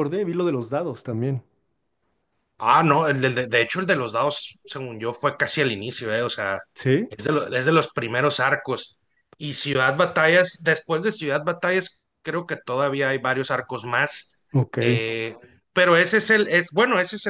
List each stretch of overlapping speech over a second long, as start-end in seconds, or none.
none